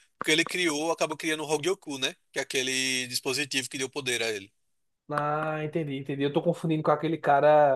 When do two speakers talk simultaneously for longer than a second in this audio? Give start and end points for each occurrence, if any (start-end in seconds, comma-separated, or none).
none